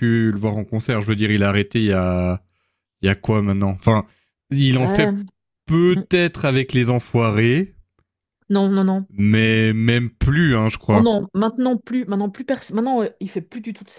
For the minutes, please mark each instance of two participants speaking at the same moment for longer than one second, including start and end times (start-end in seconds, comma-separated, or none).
none